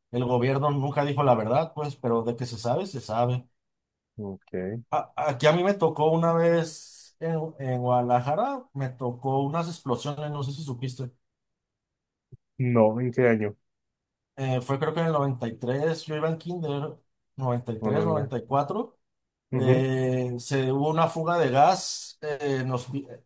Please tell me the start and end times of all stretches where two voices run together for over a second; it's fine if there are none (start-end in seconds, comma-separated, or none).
none